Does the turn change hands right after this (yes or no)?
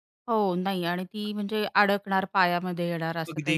yes